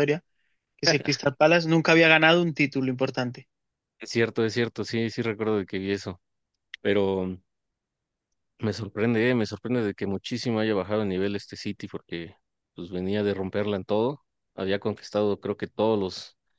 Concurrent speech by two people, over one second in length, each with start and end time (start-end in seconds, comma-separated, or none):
none